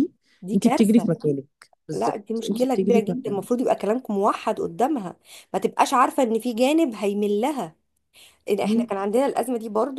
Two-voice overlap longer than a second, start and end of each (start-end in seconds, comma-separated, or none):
1.9-3.6